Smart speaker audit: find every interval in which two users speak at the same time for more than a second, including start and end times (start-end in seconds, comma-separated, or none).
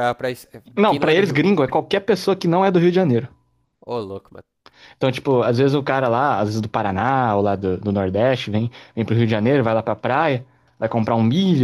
none